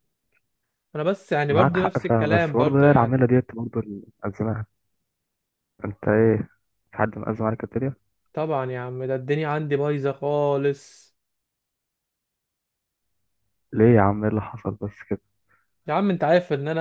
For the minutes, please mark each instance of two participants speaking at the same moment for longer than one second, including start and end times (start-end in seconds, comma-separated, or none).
1.5-3.2